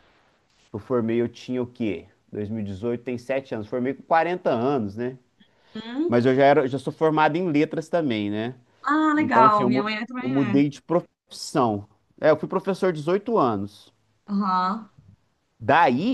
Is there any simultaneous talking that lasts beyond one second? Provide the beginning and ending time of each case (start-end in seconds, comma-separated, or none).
9.1-10.6